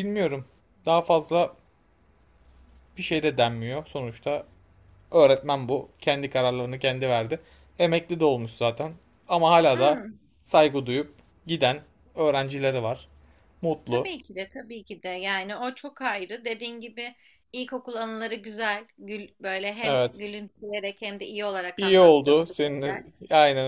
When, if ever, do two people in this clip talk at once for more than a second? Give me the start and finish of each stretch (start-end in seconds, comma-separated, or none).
21.8-23.1